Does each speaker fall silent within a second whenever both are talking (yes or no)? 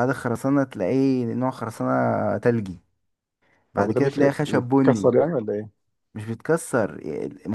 no